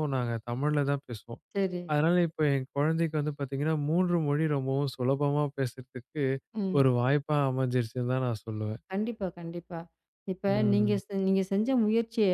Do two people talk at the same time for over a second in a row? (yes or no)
no